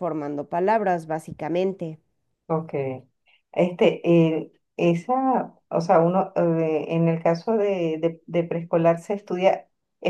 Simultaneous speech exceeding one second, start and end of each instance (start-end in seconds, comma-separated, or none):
none